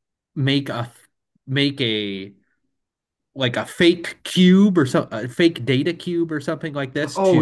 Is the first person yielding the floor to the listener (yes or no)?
yes